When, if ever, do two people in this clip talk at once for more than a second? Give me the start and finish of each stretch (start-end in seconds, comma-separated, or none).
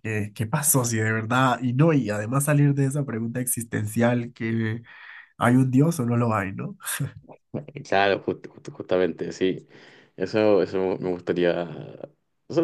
none